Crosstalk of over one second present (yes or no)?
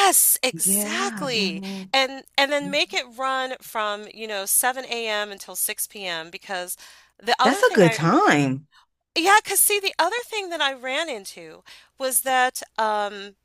yes